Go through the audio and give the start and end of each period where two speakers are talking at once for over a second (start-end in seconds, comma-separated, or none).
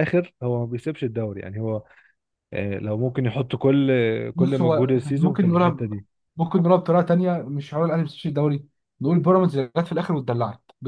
4.3-5.9